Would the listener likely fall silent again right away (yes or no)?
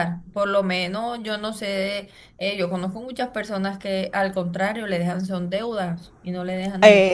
no